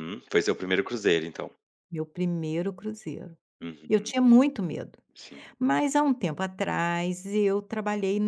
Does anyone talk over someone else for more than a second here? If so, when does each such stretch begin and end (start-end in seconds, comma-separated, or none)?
none